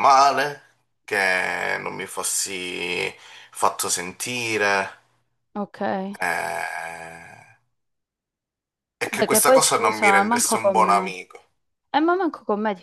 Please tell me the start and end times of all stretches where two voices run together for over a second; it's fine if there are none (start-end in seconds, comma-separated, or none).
9.0-11.1